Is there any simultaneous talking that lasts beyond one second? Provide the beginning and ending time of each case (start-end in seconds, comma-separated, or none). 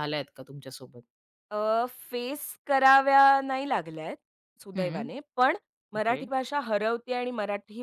none